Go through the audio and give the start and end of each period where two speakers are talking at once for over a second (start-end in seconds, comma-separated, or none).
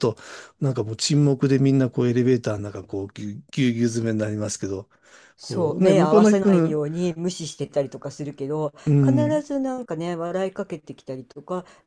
5.4-6.8